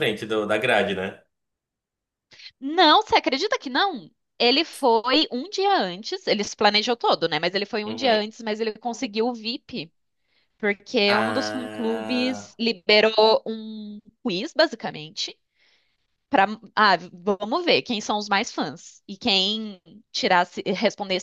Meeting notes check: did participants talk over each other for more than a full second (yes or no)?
yes